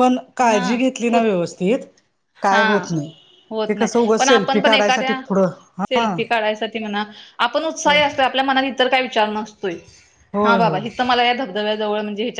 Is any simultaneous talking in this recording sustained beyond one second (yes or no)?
yes